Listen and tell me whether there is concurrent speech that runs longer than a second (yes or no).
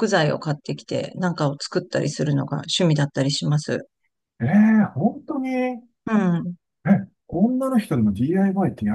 no